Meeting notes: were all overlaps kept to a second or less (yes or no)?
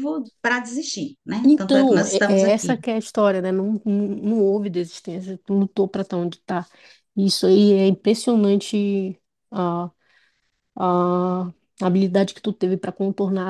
no